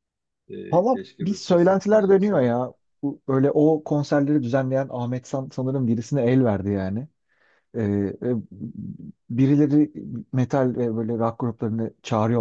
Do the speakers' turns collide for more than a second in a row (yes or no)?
yes